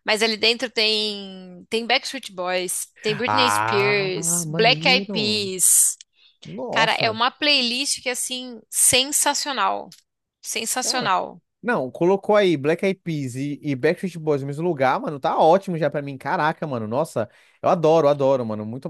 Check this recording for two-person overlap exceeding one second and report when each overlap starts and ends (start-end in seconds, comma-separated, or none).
3.1-5.5